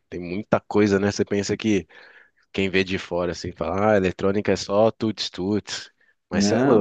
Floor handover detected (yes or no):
no